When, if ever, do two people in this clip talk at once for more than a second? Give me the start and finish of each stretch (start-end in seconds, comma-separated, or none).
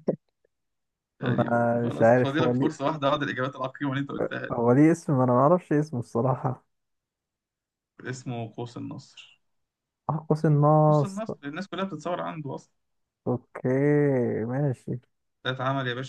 1.2-2.9